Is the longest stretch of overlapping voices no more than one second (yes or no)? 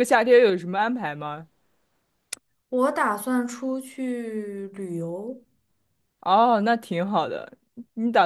yes